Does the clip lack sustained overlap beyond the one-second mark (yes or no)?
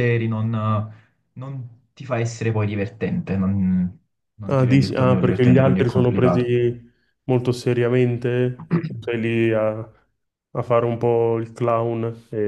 no